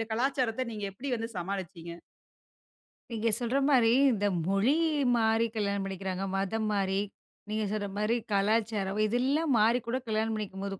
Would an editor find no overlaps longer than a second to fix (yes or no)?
yes